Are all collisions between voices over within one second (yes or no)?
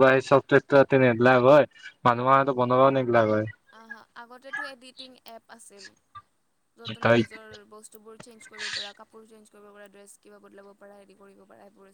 yes